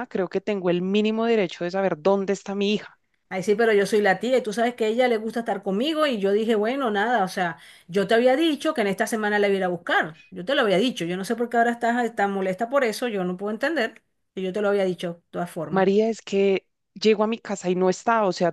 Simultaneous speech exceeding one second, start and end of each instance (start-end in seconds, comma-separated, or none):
none